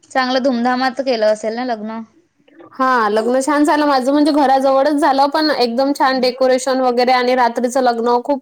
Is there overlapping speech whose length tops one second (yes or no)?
no